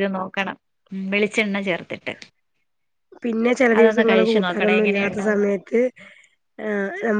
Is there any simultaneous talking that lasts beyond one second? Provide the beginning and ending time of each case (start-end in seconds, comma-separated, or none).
3.8-5.6